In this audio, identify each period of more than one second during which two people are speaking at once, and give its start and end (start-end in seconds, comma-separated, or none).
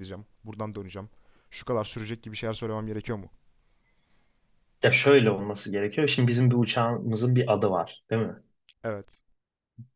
none